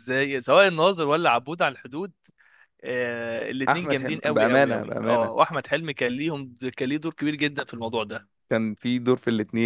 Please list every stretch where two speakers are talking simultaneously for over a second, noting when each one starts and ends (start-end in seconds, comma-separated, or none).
3.7-5.3